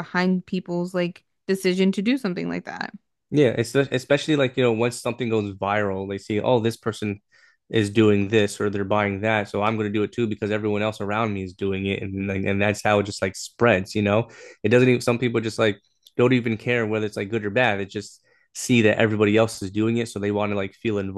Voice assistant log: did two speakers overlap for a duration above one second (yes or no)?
no